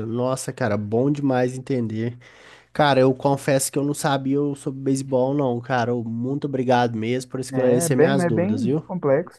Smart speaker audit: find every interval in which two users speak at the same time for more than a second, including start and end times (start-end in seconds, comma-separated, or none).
7.5-8.8